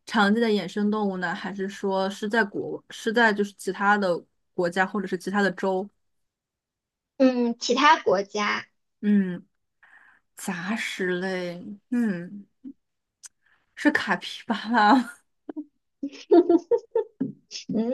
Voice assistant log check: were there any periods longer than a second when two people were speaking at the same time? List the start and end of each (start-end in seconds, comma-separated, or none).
none